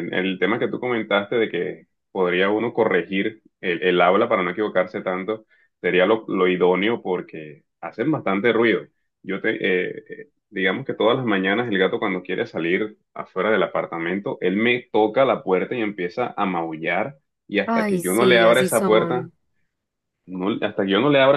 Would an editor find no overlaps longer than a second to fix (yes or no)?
no